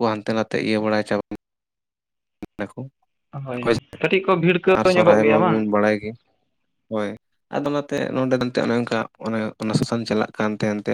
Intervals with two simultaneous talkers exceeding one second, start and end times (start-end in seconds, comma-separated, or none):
4.0-5.6